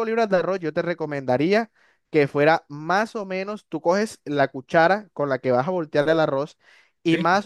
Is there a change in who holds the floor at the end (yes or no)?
no